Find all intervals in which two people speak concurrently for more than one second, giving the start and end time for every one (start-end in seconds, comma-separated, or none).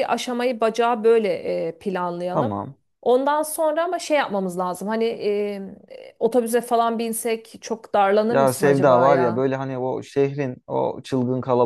8.3-9.5